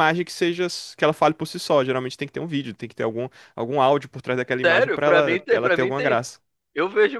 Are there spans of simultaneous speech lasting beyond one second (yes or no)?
yes